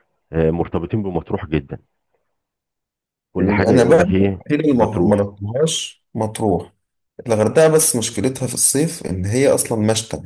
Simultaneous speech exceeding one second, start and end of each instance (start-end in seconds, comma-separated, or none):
3.4-5.3